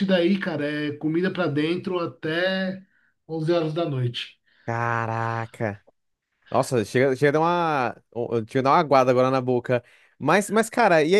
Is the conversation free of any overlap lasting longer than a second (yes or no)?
yes